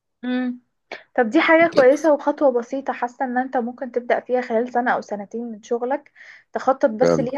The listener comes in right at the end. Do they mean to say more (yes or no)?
no